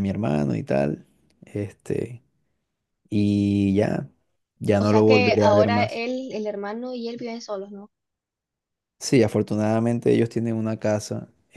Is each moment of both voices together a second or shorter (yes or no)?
no